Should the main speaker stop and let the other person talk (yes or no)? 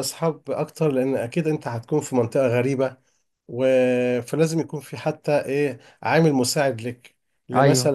no